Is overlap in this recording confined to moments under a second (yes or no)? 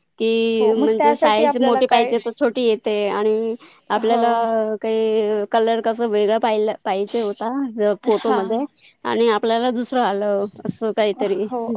no